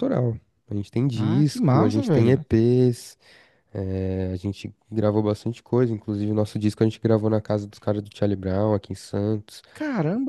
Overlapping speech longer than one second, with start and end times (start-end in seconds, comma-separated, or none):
1.1-2.4